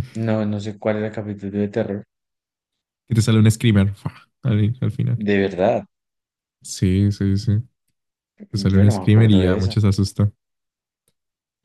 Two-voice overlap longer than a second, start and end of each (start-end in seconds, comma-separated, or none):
8.5-9.8